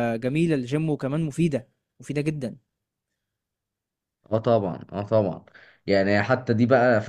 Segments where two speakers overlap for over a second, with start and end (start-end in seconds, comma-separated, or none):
none